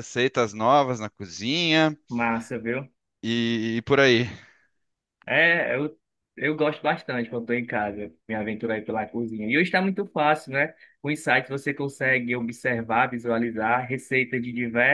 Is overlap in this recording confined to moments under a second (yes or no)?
yes